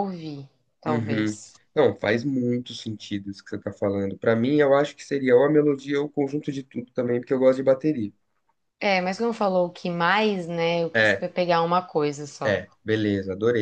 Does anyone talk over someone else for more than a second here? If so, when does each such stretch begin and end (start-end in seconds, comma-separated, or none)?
none